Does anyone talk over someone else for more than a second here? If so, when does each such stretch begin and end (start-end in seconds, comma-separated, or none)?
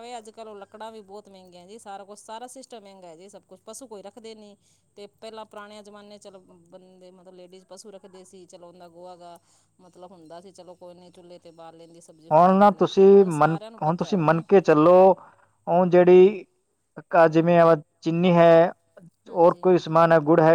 none